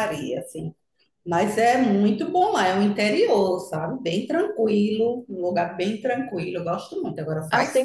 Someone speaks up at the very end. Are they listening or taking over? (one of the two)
taking over